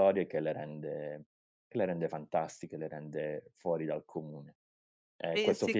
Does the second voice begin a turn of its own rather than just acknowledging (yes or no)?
no